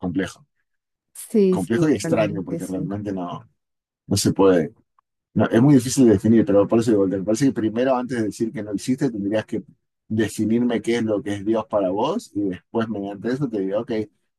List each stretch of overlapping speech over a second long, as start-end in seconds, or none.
1.5-2.9